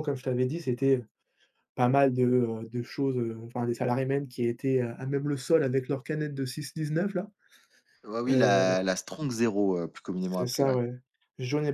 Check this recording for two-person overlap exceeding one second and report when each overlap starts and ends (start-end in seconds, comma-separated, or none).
none